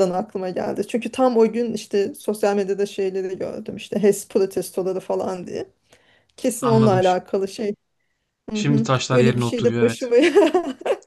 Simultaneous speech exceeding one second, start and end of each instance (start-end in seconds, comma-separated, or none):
8.5-10.0